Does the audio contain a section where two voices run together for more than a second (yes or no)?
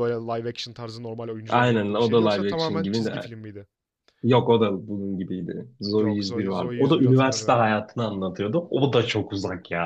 yes